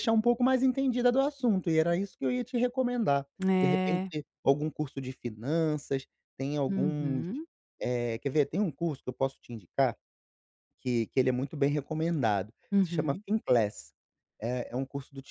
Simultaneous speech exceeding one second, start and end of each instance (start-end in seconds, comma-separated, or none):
none